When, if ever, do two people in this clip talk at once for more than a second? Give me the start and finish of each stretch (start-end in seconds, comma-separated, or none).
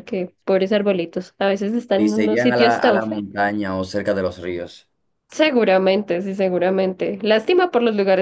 2.0-3.2